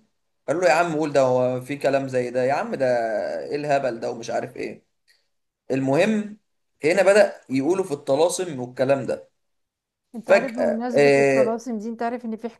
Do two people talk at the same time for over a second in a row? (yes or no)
yes